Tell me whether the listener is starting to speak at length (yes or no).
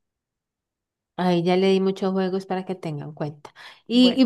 no